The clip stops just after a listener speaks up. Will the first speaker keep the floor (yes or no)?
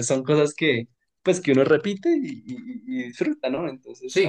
no